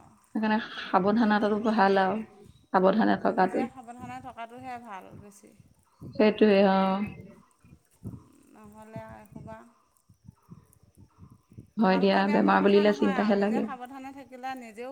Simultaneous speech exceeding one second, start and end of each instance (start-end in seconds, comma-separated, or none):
11.9-13.6